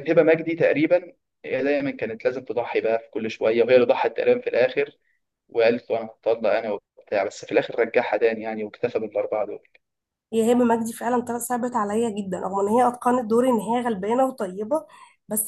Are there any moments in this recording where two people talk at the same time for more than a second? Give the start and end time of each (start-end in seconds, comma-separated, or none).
none